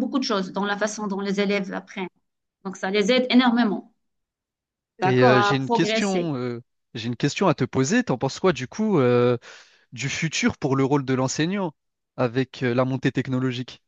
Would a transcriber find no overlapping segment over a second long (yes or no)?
no